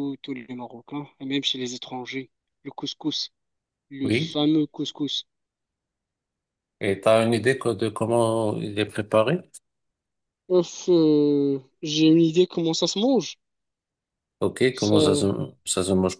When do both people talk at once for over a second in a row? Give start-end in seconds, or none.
none